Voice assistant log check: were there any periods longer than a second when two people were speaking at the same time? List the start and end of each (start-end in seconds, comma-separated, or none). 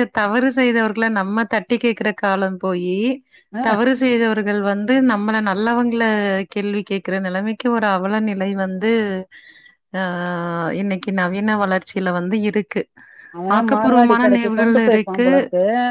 13.6-15.3